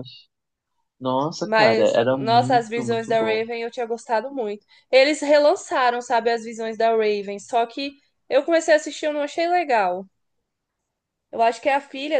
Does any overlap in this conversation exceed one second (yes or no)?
yes